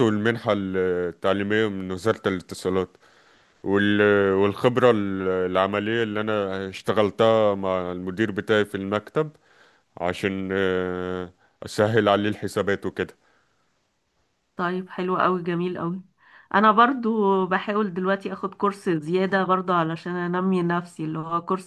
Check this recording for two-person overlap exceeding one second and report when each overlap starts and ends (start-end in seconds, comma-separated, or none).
none